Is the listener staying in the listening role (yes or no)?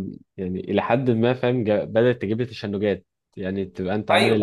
yes